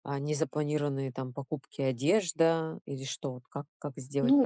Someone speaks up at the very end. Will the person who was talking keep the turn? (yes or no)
no